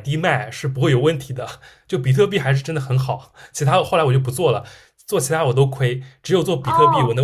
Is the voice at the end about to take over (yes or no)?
yes